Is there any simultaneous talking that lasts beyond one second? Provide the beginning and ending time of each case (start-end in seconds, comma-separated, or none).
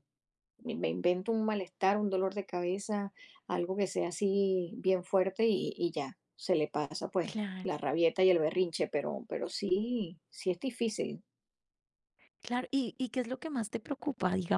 none